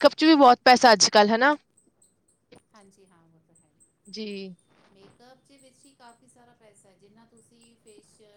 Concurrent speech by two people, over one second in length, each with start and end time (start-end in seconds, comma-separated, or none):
none